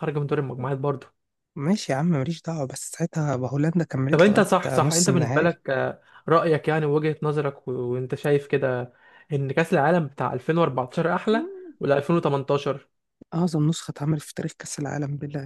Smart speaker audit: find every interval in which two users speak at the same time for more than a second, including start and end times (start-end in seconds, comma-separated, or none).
4.1-5.5